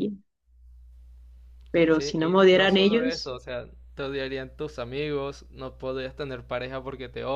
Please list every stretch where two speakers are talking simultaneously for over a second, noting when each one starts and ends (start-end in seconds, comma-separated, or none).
1.9-3.3